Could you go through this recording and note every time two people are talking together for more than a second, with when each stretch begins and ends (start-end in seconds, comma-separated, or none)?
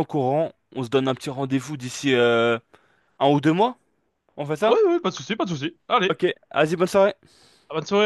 none